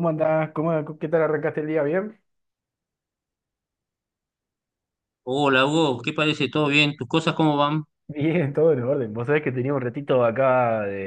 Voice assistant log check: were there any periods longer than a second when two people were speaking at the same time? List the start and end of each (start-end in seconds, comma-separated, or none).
none